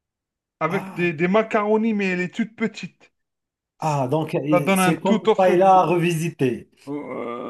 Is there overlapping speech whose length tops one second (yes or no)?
yes